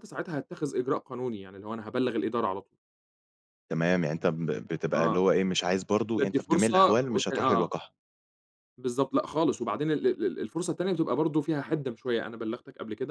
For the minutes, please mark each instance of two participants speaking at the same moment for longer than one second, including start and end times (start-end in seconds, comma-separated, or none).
6.2-7.7